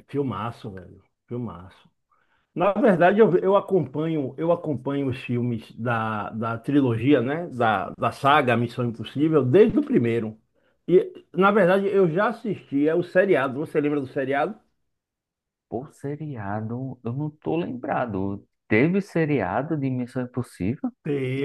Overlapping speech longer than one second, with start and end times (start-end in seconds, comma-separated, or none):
none